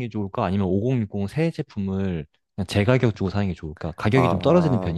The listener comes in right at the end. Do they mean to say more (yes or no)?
yes